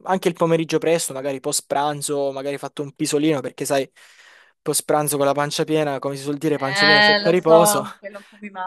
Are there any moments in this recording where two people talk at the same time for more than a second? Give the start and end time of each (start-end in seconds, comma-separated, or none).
6.6-7.8